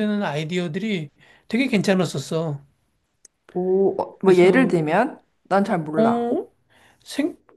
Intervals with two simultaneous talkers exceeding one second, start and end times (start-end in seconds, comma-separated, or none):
none